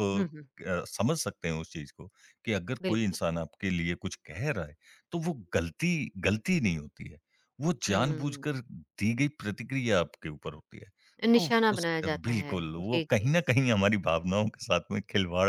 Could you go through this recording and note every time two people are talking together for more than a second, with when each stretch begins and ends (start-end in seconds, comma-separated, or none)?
11.4-13.3